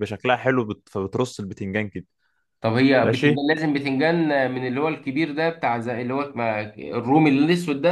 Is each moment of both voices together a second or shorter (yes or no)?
yes